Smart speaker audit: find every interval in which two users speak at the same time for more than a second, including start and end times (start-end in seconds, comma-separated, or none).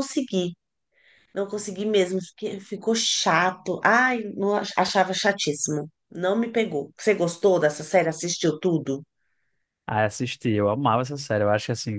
none